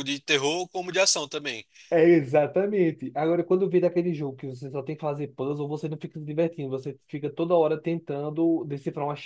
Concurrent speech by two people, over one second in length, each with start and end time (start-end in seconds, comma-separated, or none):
none